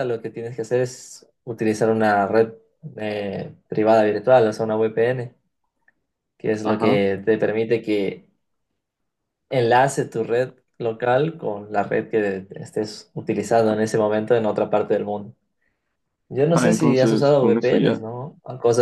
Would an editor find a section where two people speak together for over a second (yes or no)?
yes